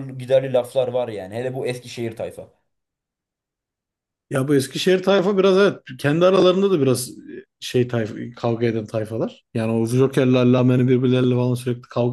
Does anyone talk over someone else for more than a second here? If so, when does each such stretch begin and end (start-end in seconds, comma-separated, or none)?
none